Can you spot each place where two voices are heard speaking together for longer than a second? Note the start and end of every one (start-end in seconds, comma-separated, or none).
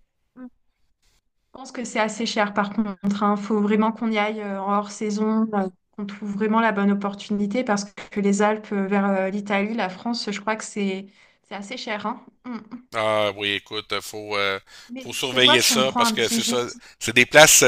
15.0-16.8